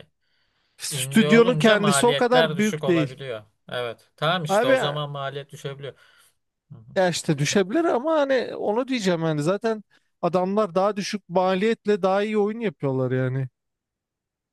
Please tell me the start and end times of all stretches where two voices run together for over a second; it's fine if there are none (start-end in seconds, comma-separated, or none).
0.9-3.2